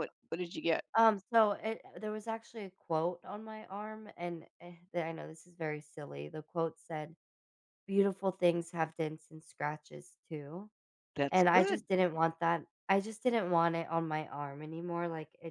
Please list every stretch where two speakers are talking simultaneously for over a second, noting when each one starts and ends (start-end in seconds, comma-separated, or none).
none